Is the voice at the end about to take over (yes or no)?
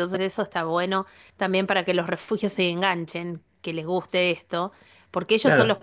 no